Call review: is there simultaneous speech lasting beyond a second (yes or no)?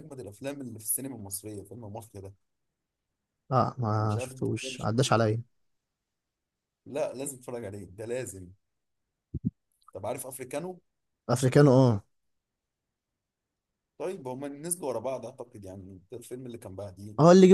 yes